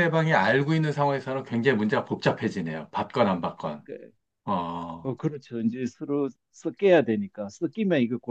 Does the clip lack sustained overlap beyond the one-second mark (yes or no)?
yes